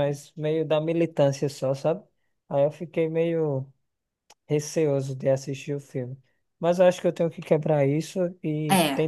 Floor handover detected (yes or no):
no